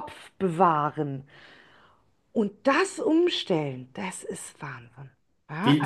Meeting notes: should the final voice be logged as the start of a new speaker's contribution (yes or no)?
yes